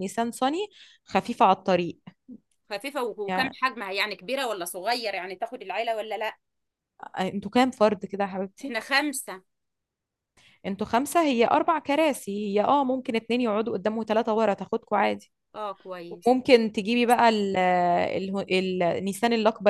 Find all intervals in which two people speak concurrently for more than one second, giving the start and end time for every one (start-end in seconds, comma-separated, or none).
none